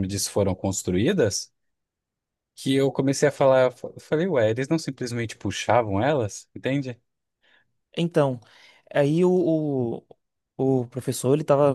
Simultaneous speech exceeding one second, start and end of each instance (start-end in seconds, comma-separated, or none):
none